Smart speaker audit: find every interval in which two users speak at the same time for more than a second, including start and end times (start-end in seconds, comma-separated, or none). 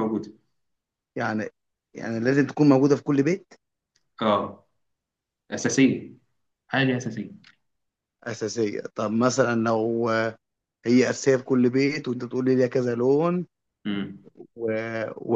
none